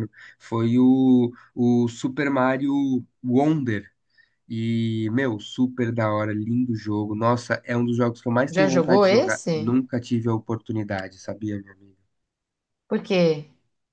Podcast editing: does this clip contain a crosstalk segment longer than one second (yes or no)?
yes